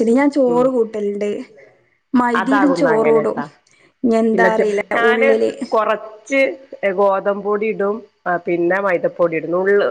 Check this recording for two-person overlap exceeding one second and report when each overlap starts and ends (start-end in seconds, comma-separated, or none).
none